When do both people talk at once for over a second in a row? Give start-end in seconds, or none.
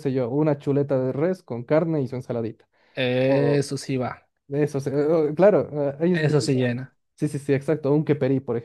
none